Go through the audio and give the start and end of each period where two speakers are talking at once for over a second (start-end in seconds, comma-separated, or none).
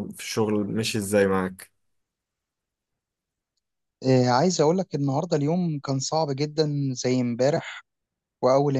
none